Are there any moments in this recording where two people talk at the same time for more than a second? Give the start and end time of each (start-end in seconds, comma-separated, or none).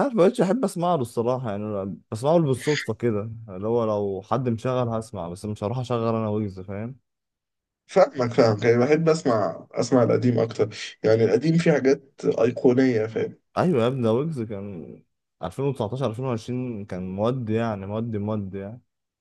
none